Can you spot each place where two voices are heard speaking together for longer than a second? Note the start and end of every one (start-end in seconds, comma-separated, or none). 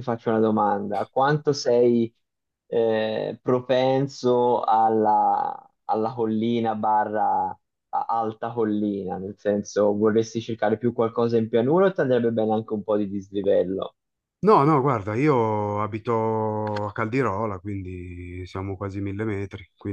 none